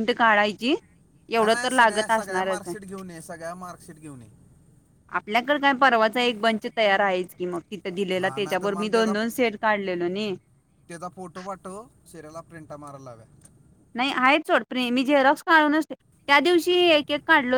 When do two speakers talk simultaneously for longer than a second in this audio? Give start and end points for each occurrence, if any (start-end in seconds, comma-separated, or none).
1.4-2.7